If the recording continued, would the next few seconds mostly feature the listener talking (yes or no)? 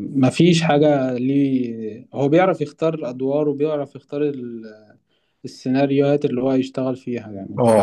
yes